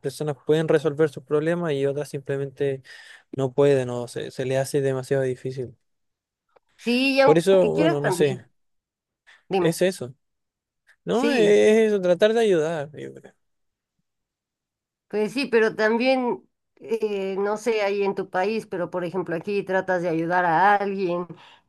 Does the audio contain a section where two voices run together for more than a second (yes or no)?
yes